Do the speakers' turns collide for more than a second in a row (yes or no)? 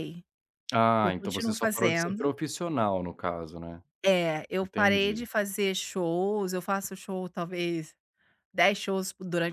yes